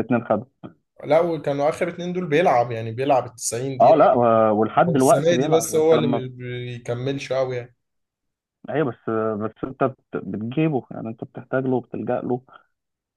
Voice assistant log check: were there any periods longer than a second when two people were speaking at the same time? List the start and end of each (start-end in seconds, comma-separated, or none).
4.9-6.2